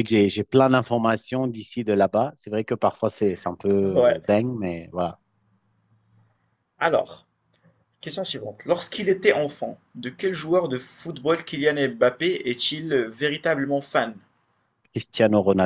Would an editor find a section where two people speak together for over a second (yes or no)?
no